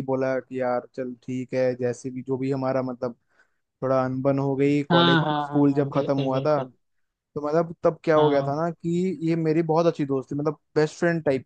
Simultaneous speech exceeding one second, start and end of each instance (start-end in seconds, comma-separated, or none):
4.9-6.6